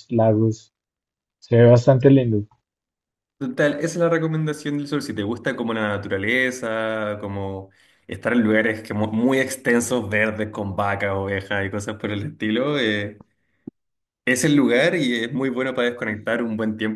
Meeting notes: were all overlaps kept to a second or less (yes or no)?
yes